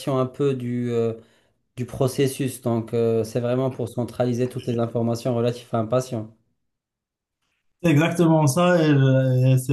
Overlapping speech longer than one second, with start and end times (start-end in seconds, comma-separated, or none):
none